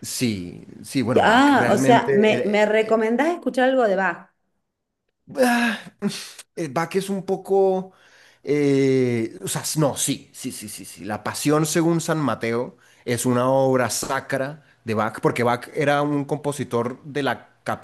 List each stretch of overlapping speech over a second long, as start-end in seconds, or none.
1.2-2.6